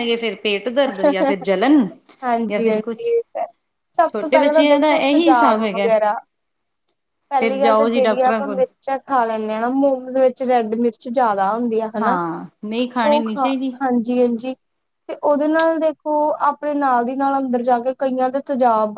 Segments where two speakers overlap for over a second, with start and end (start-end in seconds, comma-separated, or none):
4.1-5.9